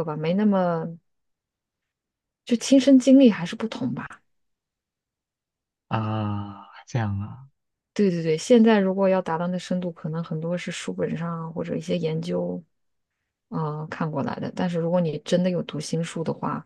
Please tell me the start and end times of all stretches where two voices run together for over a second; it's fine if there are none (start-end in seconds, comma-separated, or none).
none